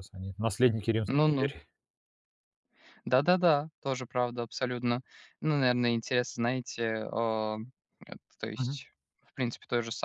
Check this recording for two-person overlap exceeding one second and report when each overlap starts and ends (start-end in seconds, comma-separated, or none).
none